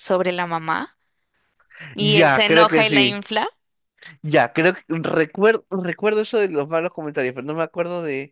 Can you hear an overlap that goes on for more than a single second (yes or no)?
yes